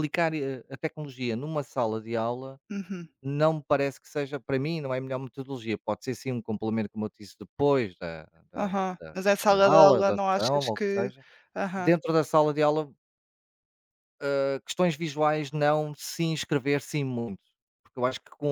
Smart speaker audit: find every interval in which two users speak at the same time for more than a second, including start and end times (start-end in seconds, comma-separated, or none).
8.6-11.1